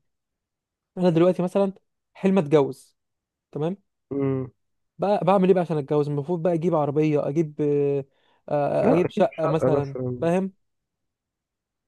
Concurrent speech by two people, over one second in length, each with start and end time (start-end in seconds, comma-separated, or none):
8.8-10.3